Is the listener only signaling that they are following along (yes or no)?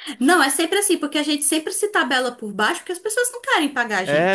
no